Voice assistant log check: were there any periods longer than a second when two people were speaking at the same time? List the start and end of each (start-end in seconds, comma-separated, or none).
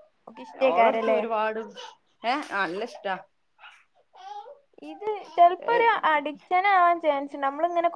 none